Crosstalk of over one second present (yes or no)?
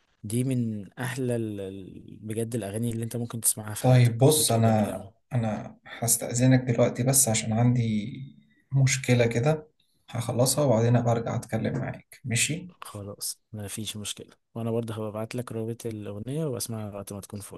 yes